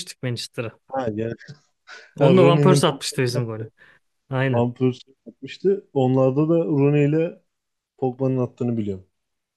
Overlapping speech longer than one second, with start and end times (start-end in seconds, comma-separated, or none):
2.2-3.4